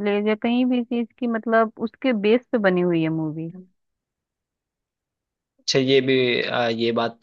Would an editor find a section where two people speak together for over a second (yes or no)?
no